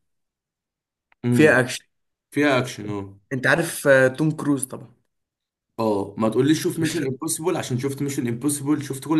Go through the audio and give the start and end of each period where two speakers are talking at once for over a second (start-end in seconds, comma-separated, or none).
none